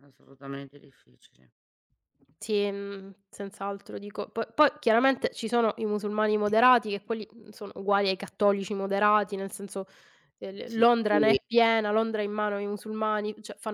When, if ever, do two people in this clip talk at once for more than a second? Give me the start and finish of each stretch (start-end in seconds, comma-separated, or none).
none